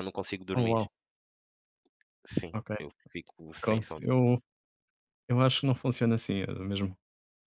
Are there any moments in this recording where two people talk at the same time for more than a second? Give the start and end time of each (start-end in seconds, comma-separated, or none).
none